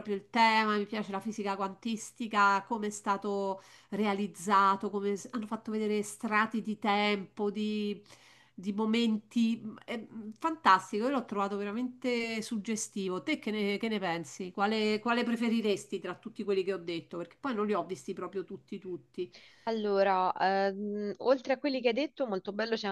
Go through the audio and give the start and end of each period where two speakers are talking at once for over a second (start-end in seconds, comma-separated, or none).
none